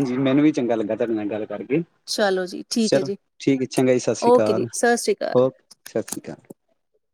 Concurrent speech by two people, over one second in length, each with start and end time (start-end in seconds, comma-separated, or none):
none